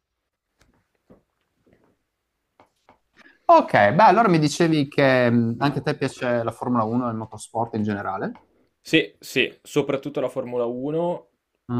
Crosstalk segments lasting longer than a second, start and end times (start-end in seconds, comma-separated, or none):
none